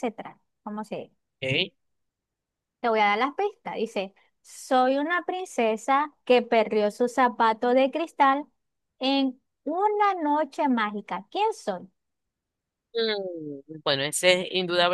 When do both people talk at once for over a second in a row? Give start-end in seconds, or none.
none